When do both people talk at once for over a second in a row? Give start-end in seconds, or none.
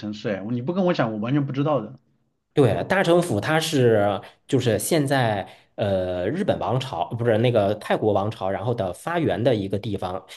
none